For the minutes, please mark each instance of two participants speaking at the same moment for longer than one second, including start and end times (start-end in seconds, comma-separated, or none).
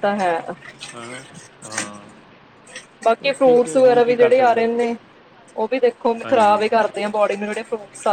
3.2-4.7